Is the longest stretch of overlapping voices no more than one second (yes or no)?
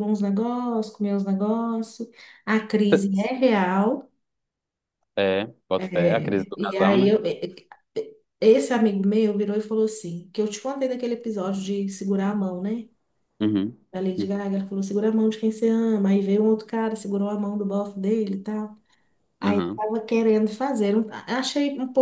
no